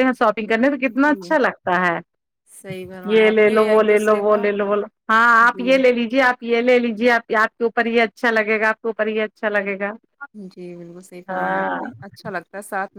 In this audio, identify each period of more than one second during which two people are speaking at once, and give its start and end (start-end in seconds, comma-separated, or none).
3.1-4.4